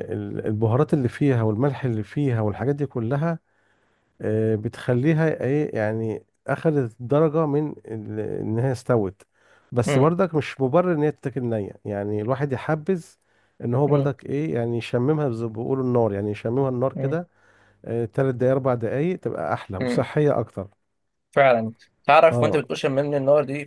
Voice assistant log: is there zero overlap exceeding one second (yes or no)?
yes